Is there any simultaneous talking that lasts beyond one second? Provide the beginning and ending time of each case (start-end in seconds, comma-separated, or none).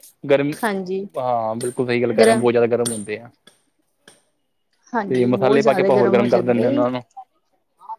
5.1-6.7